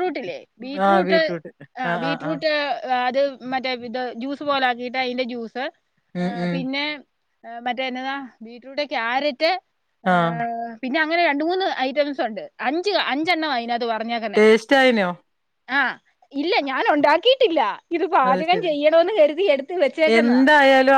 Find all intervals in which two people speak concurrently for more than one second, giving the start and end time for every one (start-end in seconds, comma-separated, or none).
none